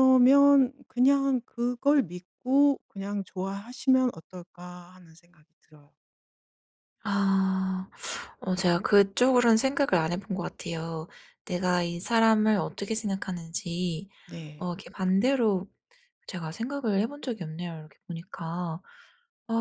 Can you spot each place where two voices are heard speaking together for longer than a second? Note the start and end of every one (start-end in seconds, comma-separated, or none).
none